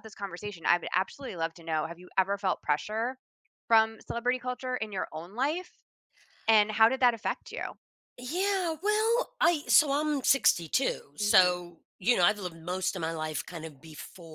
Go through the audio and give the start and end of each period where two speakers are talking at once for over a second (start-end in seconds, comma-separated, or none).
none